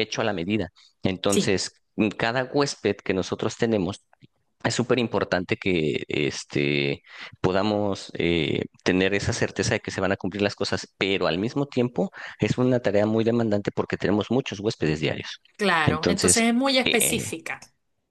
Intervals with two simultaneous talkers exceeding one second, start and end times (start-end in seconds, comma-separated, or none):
15.8-17.3